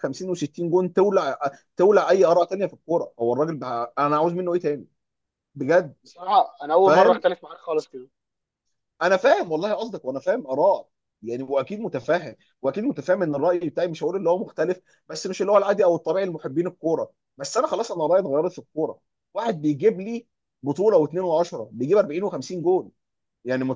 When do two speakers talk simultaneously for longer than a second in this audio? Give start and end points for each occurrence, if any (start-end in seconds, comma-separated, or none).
none